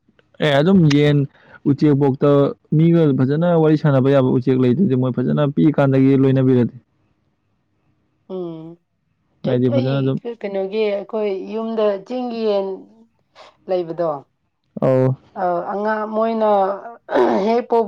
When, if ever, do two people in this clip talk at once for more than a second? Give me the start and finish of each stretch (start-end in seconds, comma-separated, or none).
none